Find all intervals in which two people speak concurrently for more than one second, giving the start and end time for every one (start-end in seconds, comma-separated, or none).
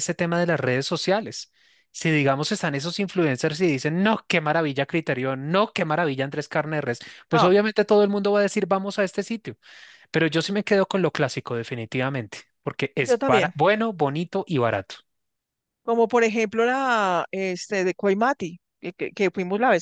none